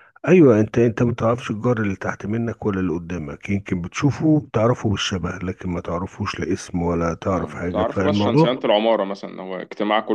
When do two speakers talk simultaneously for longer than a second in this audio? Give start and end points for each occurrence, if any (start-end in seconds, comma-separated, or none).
7.3-8.5